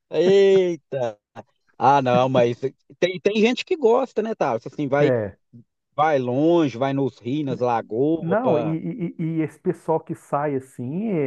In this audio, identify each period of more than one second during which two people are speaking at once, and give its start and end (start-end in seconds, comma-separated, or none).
none